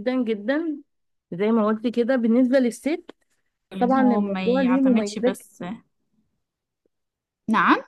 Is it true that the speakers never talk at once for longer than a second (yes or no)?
no